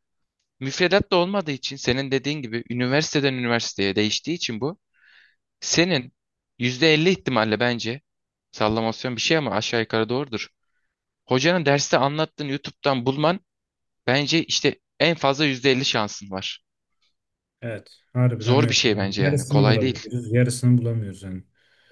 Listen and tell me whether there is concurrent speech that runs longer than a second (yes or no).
yes